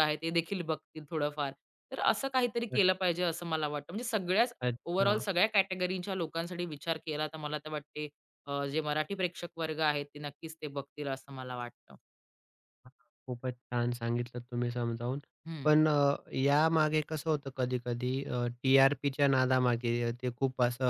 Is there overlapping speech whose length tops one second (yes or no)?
no